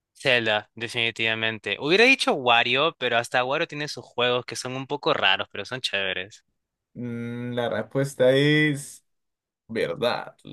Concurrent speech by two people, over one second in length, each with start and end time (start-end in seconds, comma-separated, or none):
none